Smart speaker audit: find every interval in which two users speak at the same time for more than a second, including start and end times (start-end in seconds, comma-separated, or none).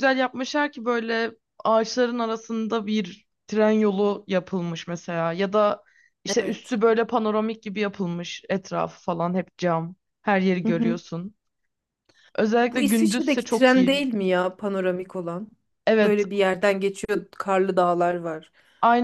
12.7-14.0